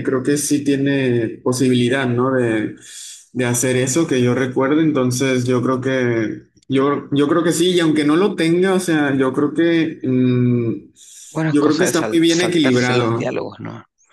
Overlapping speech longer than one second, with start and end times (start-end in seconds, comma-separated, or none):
11.5-13.3